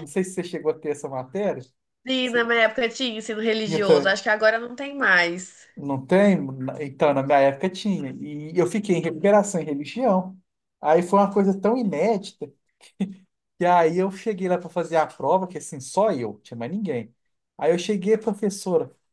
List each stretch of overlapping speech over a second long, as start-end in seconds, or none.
none